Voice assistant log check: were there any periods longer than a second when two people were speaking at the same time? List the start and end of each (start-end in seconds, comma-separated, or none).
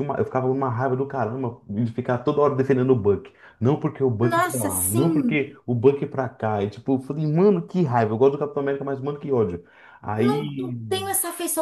4.2-5.5